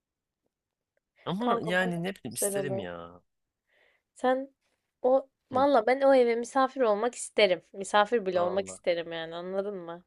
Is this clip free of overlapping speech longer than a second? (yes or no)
no